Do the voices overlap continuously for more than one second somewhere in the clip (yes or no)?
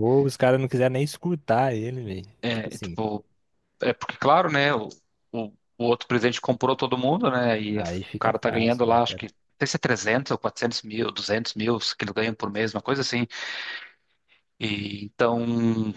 yes